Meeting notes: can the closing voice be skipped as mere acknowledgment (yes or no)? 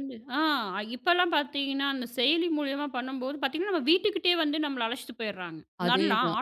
yes